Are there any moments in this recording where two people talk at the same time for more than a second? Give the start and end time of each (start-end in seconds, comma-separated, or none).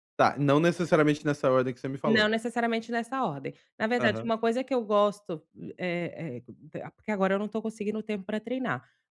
none